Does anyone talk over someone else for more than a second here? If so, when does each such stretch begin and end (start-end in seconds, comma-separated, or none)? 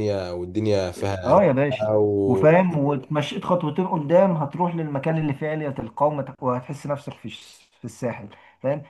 1.2-2.8